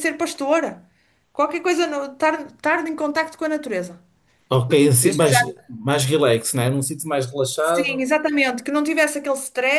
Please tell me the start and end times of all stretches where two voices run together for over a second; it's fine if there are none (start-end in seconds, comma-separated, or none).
none